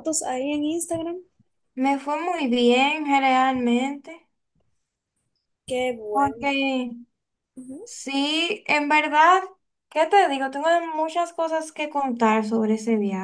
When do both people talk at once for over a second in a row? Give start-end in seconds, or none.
none